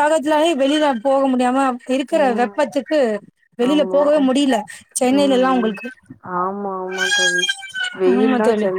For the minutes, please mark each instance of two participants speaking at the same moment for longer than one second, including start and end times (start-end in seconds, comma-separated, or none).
none